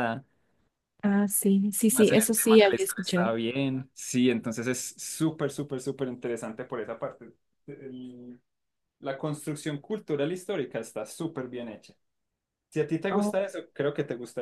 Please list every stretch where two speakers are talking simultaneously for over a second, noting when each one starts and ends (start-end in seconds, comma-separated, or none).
1.9-3.3